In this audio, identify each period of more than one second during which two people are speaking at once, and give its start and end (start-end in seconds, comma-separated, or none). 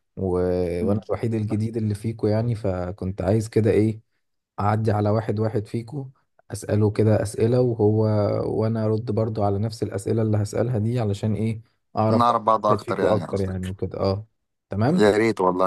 12.1-13.7